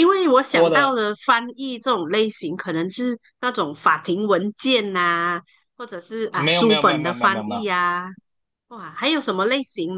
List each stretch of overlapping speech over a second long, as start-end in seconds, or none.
6.3-7.7